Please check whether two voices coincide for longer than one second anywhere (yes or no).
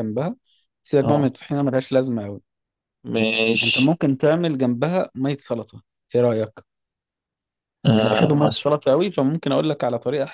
no